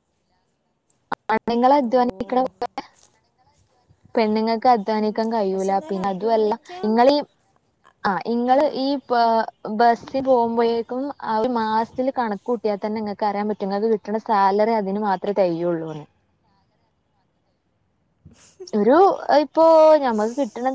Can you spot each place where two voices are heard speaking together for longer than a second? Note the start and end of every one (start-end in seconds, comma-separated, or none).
5.0-7.2